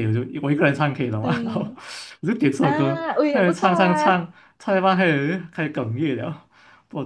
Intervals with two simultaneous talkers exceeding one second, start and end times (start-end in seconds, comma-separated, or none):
2.6-4.2